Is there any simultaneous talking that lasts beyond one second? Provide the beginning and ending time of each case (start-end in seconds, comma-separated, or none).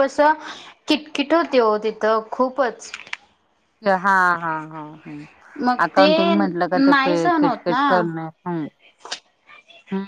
5.9-7.8